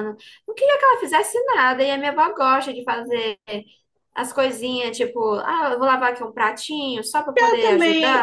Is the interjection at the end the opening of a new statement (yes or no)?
yes